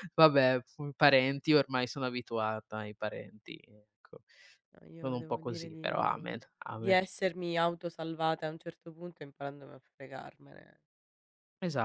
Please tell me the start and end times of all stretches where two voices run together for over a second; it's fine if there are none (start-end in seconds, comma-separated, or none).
5.0-7.0